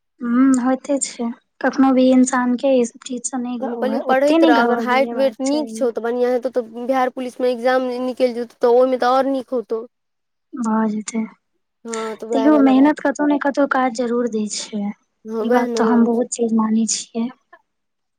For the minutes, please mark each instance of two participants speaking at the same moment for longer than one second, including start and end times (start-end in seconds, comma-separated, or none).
3.6-5.7